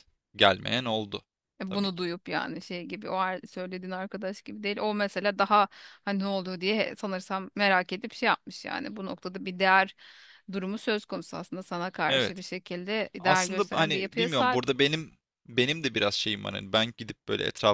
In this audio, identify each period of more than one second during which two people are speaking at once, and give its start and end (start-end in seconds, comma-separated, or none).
13.2-14.6